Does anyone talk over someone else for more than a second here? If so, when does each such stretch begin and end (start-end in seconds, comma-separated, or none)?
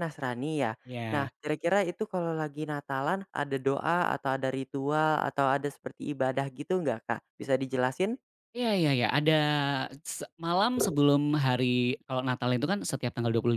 none